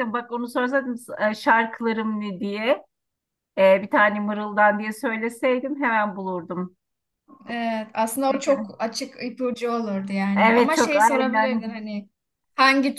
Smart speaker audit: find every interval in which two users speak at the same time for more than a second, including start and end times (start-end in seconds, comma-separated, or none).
10.3-11.7